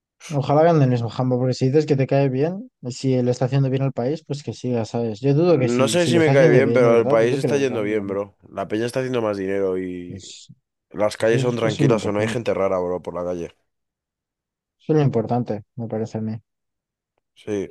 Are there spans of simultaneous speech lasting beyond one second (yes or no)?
yes